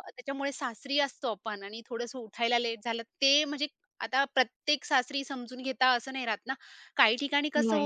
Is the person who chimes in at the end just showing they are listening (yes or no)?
yes